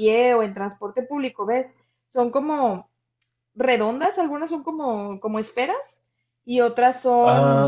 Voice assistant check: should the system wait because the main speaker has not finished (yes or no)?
yes